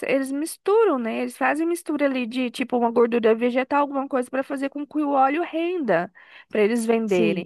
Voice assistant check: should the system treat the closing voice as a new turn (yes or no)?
no